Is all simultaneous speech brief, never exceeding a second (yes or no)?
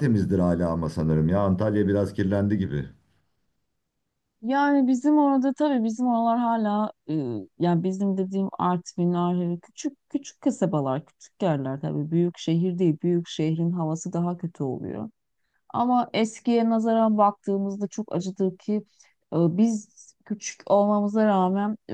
yes